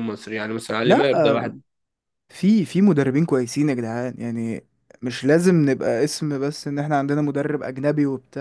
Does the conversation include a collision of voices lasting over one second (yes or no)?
no